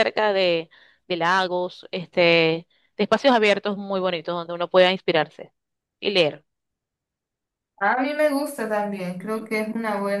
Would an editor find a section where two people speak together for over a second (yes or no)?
no